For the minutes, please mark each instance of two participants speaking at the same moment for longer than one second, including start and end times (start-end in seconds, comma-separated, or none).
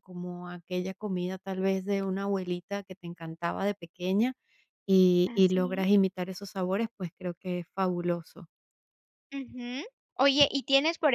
none